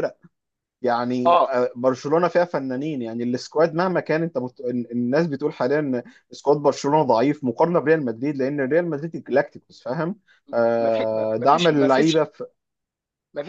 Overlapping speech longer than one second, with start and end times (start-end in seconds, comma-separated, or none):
10.8-12.3